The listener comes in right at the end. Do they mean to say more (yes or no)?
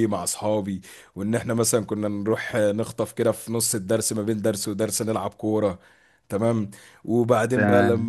no